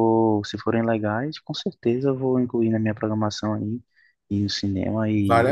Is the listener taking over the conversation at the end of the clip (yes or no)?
yes